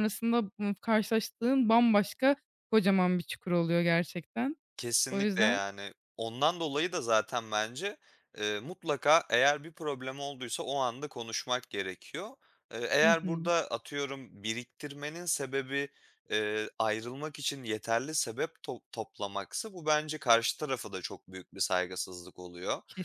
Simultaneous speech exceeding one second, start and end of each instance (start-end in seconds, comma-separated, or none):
none